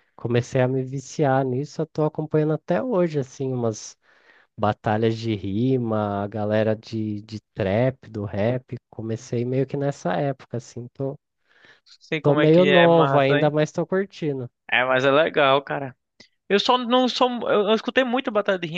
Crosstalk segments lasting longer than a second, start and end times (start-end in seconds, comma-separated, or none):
12.2-13.5